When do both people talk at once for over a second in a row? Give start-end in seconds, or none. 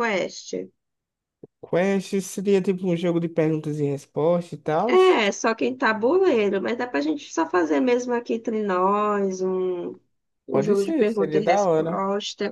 10.5-12.0